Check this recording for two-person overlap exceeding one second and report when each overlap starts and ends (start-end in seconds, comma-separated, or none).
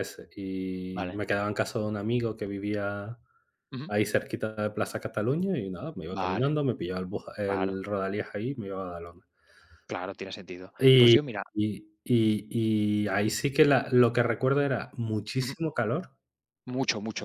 none